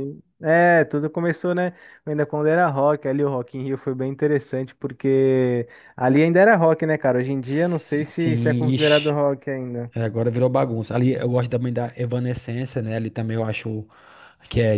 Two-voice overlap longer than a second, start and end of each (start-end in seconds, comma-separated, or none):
7.5-9.2